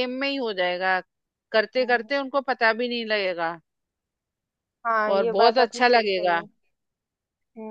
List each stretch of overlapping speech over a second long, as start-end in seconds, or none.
5.2-6.4